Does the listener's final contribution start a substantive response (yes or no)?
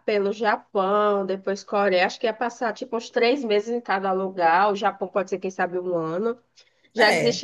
no